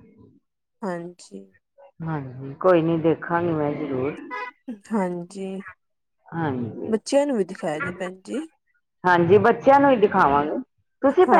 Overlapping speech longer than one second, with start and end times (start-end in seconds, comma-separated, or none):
none